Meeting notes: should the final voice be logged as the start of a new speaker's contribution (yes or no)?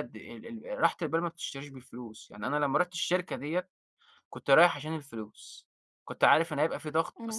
no